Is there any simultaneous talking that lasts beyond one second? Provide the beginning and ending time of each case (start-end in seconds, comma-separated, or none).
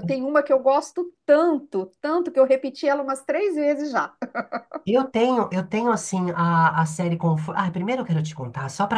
none